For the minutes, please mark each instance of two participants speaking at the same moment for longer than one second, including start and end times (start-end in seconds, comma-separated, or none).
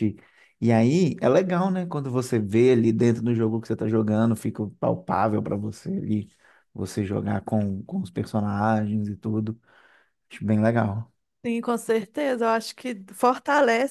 none